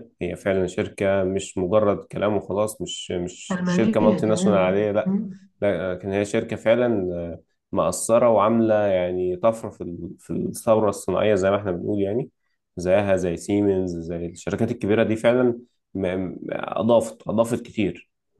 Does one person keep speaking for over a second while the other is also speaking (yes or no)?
yes